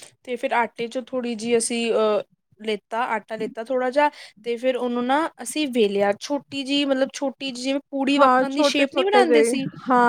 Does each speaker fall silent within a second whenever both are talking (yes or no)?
no